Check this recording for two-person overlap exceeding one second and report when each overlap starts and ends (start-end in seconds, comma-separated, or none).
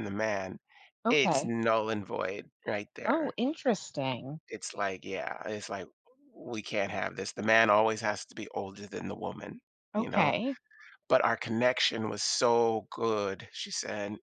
none